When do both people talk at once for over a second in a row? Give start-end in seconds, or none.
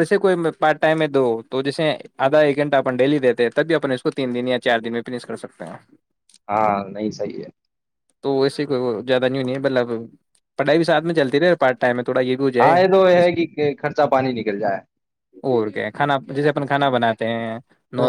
none